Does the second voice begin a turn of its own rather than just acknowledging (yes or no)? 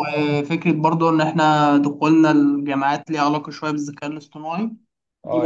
yes